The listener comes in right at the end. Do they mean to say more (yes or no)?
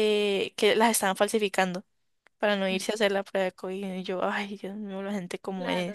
yes